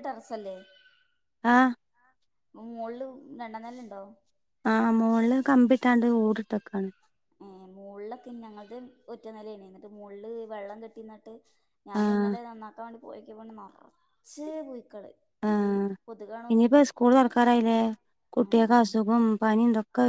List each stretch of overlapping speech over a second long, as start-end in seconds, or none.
none